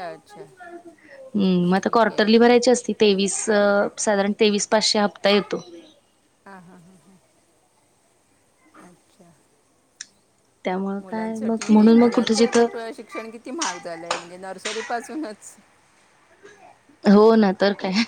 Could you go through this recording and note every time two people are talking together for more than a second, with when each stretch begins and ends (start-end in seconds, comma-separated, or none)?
11.0-12.7